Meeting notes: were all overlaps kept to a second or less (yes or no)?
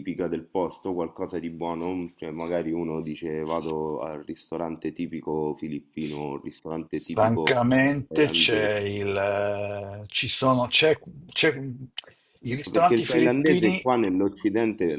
no